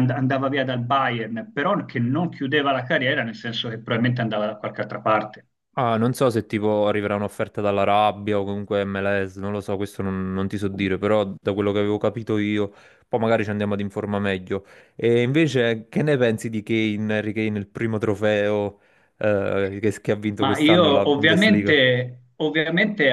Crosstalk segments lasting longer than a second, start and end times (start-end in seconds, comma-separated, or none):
20.4-21.7